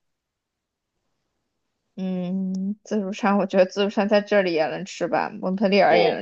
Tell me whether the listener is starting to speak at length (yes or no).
yes